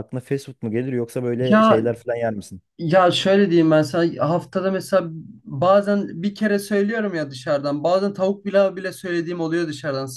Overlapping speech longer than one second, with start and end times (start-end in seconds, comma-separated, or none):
none